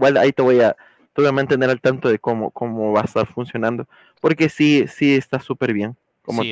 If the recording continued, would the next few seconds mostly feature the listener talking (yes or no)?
yes